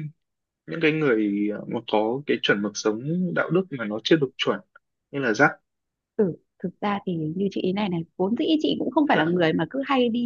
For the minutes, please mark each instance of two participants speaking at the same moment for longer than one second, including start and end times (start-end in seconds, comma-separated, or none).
none